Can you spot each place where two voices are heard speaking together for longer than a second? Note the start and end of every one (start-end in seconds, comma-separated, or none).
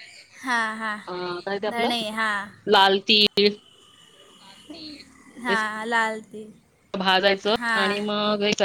none